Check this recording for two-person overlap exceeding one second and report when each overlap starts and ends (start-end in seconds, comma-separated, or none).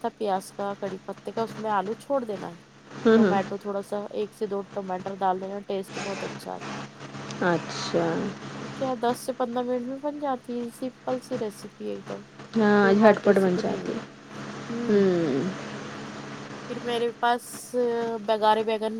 12.6-13.9